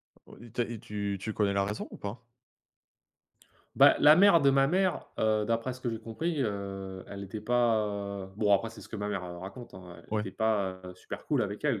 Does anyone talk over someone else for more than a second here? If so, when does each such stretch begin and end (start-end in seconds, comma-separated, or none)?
none